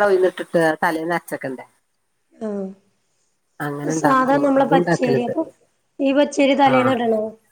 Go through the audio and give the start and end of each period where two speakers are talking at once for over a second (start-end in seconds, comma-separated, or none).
4.0-5.3